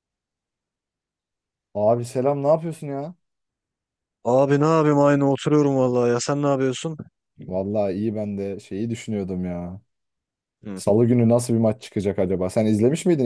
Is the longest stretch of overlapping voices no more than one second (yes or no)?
yes